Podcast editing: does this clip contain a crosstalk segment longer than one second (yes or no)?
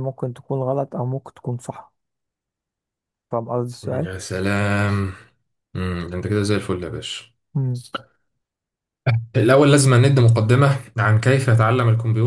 no